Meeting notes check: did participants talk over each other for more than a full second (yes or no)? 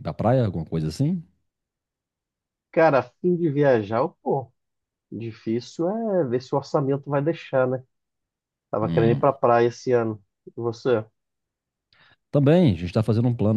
no